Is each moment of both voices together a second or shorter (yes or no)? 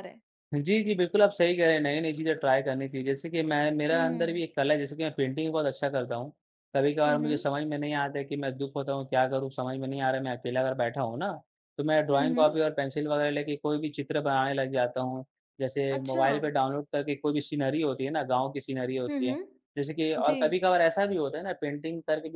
yes